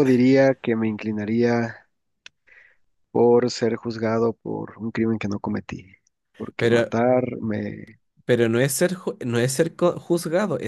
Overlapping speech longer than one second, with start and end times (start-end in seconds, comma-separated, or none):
none